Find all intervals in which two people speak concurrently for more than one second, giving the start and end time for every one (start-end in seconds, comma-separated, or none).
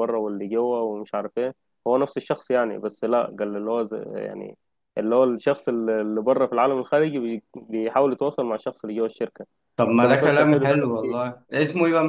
9.9-11.3